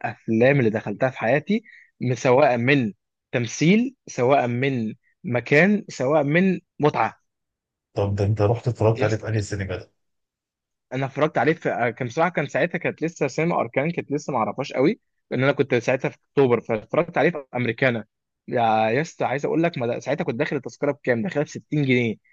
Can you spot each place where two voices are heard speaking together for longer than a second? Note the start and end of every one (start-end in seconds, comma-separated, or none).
none